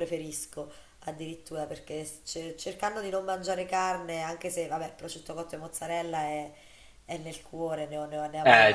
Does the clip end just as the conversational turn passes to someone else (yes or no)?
no